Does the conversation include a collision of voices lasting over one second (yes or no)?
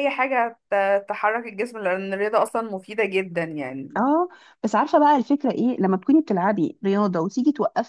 no